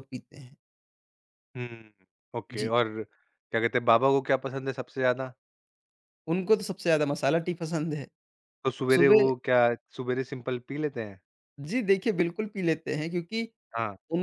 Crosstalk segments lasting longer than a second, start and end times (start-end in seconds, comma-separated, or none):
none